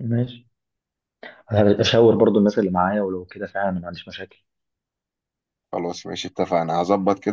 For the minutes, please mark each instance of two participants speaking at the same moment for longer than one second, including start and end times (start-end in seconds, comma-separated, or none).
none